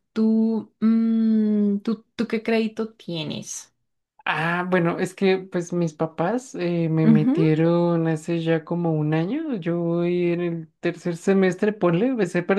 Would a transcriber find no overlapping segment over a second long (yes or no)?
yes